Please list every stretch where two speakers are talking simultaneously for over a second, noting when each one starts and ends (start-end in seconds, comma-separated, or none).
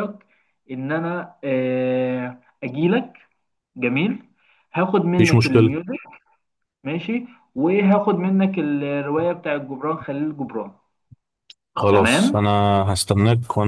none